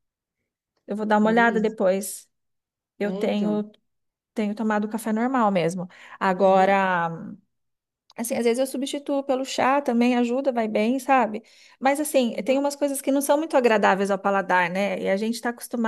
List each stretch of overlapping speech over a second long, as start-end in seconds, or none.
none